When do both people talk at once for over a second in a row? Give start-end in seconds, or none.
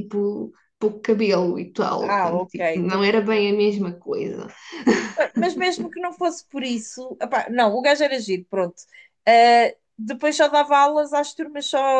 2.0-3.5